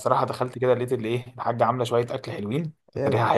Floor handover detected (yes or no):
no